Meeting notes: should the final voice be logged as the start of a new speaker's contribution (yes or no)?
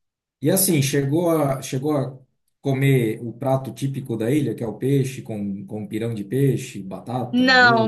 yes